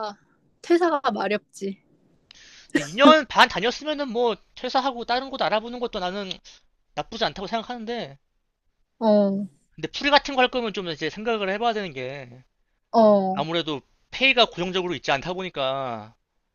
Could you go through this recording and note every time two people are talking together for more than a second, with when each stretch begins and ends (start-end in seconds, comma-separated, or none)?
none